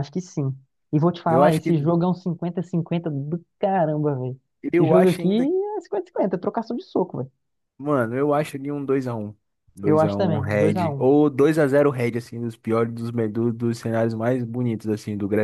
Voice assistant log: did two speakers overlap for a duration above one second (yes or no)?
yes